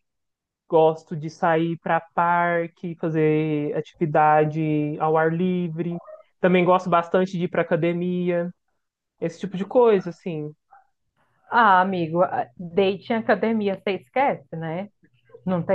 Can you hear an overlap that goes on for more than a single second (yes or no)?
no